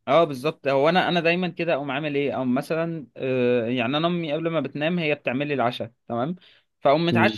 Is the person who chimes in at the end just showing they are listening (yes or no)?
yes